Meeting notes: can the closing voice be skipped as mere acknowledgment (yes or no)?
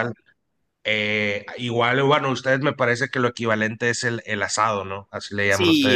no